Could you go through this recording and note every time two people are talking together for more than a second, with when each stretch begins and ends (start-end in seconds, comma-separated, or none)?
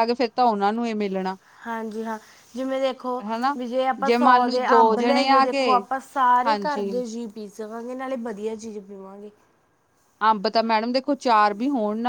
4.2-5.8